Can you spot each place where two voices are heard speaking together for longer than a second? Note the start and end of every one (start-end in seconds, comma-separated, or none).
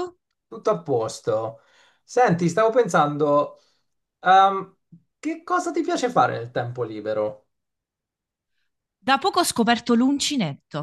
none